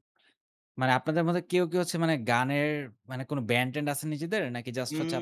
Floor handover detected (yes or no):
yes